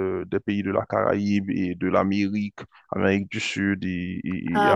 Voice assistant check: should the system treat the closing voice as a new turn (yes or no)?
no